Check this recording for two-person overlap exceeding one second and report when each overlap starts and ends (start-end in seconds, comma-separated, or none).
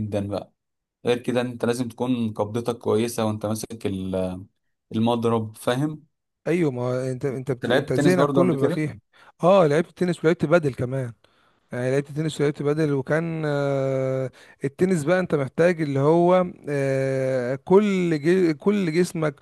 7.5-8.8